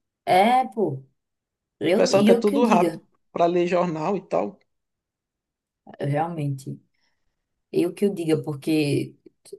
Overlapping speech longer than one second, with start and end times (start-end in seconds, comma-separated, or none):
1.8-3.0